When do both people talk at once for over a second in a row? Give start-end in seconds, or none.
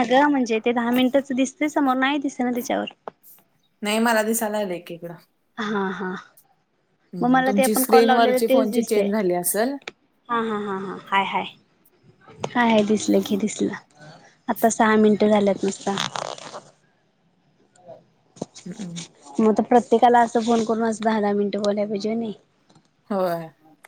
7.5-9.0